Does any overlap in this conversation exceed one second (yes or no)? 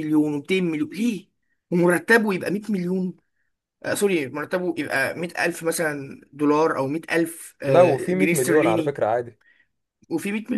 yes